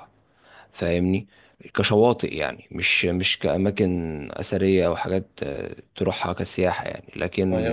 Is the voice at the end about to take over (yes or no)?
no